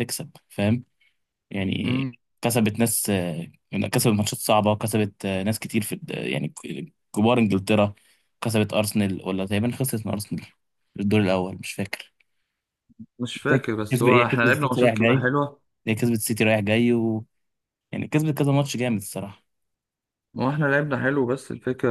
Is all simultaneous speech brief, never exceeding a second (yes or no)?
no